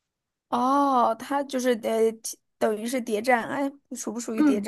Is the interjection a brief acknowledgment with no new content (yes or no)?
no